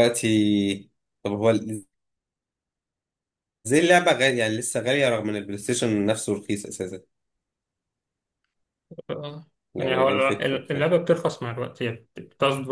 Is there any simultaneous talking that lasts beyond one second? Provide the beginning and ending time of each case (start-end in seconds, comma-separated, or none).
9.8-10.9